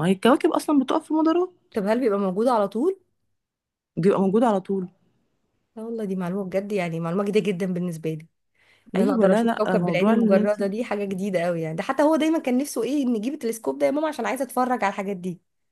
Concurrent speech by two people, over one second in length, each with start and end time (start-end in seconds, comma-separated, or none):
8.9-10.6